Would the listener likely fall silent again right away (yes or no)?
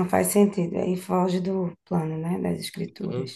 no